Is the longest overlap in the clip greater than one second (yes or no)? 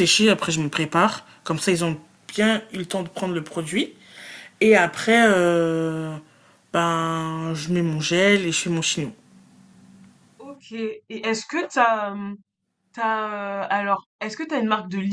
no